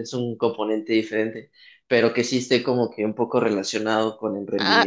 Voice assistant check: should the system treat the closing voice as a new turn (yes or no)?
yes